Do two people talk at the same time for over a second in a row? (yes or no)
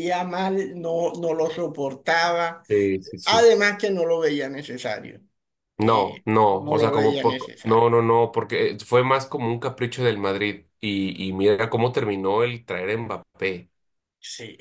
yes